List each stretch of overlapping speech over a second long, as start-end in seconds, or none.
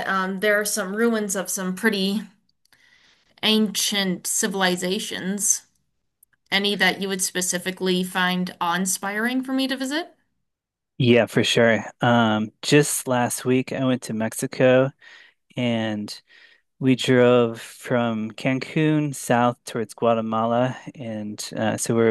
none